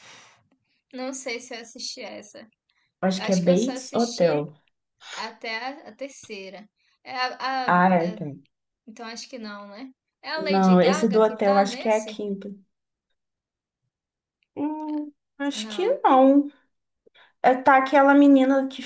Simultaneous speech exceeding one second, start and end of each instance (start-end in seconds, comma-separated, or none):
3.2-4.5, 10.4-12.2